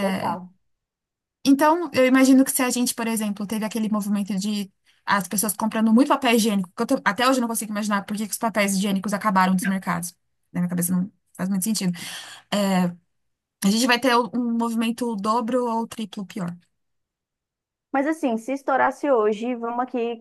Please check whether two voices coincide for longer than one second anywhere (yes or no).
no